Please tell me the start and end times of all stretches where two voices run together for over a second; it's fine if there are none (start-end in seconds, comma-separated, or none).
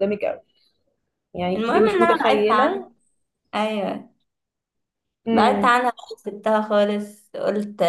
1.6-2.9